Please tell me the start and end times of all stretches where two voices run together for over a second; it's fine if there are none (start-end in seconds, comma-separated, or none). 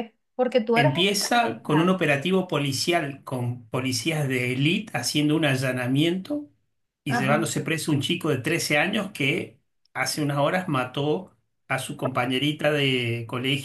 0.7-2.0